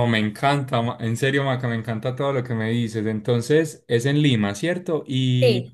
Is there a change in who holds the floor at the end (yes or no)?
no